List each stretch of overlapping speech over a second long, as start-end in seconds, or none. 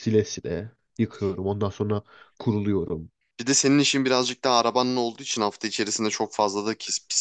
none